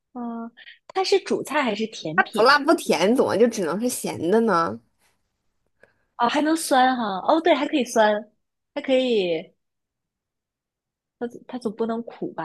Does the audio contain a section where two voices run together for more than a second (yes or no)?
no